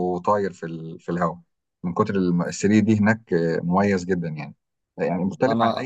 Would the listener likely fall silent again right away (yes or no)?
yes